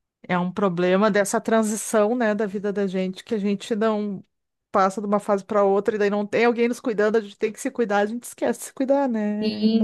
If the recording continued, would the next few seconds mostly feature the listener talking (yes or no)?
yes